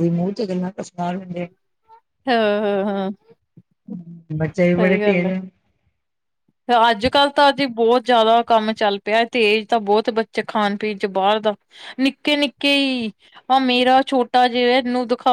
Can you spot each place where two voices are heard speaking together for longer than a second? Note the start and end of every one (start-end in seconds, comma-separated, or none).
none